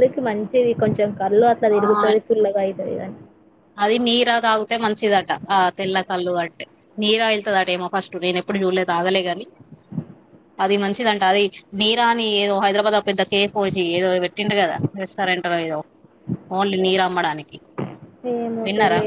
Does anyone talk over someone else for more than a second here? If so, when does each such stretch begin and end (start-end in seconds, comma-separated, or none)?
none